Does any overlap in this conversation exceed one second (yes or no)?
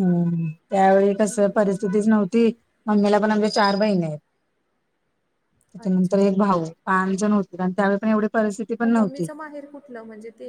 no